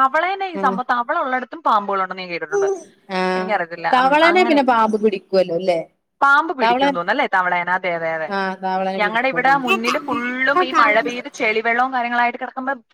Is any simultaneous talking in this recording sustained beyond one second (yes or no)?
yes